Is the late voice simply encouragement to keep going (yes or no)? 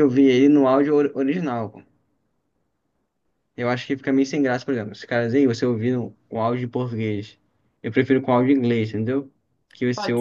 yes